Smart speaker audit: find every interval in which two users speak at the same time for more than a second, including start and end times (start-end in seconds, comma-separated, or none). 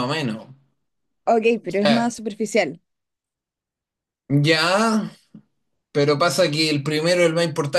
none